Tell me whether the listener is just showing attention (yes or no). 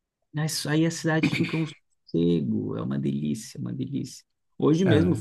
yes